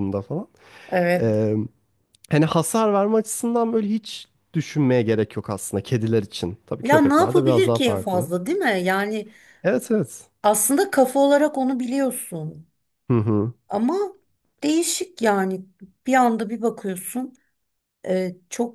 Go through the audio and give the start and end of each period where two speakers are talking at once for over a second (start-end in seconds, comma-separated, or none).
6.8-8.3